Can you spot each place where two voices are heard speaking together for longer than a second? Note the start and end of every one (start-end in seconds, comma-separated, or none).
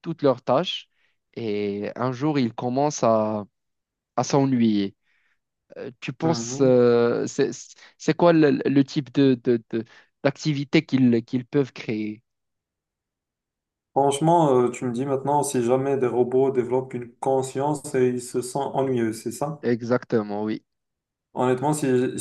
none